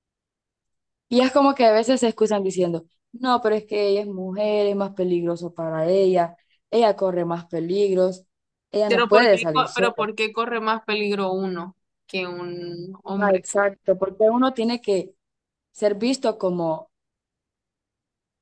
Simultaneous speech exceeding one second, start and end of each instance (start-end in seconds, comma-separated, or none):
8.9-10.1